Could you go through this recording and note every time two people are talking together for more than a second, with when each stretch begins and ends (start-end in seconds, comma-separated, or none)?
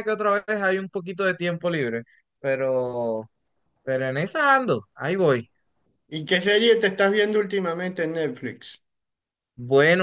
none